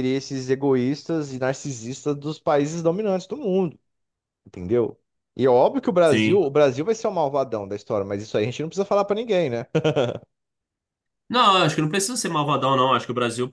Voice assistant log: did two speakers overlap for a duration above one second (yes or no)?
no